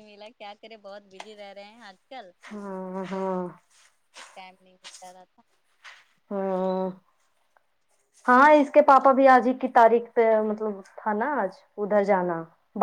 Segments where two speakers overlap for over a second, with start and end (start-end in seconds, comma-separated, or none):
none